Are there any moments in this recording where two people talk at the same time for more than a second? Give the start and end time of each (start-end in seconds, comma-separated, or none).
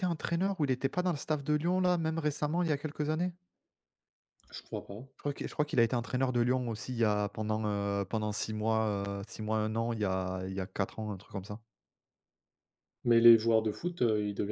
none